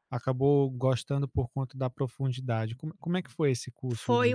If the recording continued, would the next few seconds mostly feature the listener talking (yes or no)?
yes